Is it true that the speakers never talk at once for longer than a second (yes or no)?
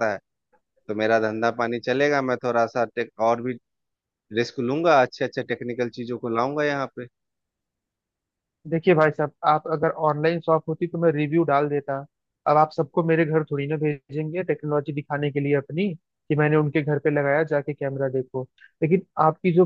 yes